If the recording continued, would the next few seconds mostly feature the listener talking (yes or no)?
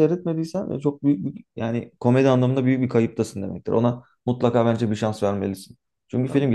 no